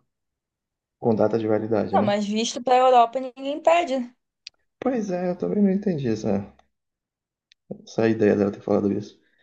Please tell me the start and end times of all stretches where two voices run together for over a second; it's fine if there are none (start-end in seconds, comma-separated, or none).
none